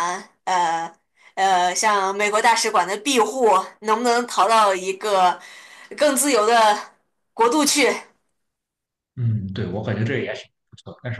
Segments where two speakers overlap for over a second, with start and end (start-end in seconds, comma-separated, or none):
none